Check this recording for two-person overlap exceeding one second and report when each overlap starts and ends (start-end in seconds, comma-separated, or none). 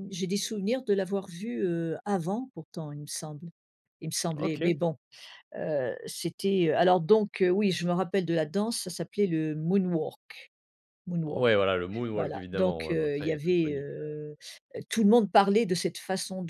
12.1-14.2